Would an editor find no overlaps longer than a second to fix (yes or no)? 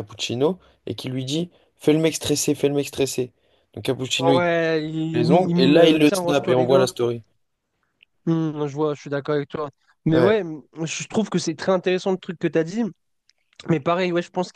no